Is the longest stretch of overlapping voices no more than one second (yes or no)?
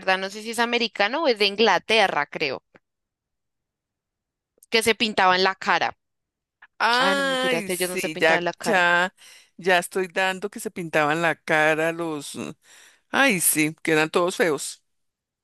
no